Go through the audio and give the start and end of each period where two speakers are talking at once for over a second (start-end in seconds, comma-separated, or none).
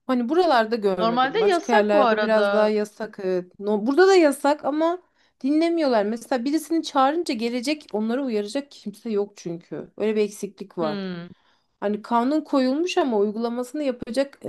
1.0-2.7